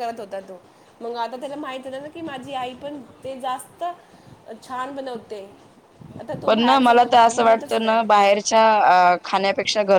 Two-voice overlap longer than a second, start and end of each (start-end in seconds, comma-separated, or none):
6.5-8.0